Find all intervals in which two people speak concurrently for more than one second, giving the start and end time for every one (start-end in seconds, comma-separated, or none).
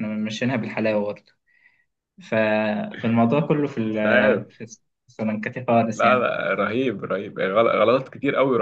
none